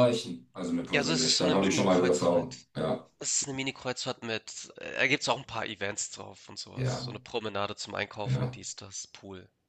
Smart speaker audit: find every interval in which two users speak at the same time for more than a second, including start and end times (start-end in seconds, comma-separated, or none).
0.9-2.7